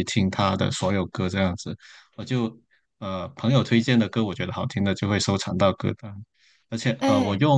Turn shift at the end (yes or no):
no